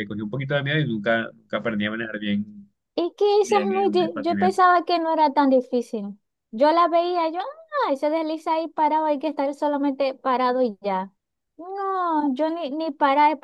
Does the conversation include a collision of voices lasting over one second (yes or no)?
yes